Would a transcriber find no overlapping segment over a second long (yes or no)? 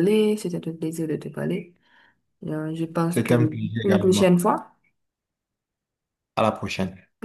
no